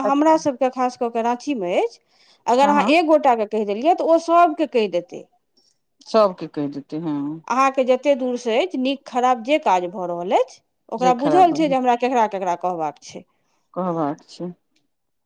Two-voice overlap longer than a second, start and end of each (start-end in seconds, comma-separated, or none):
none